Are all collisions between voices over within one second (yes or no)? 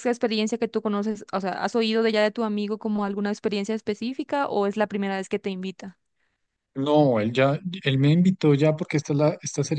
yes